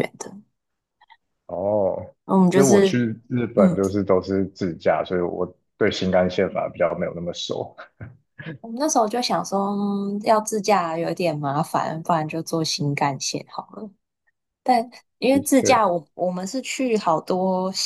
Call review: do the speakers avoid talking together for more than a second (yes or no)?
yes